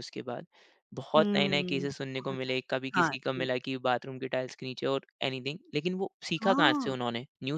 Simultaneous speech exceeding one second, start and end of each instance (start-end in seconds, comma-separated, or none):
1.2-3.5